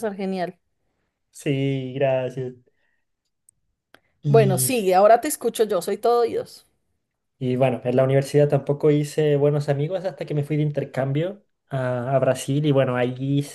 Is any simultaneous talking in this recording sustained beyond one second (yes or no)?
no